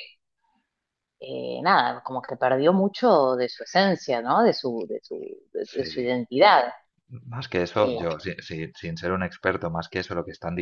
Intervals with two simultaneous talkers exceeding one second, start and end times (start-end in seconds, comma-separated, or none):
none